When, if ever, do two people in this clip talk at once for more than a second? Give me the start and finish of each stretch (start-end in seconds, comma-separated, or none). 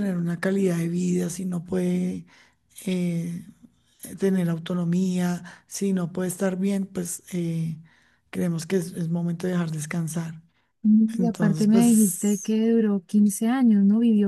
11.2-12.6